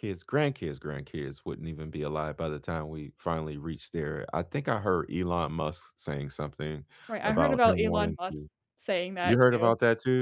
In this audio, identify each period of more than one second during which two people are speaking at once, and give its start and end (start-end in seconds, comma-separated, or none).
7.2-8.5